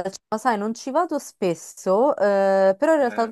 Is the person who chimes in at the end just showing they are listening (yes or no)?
yes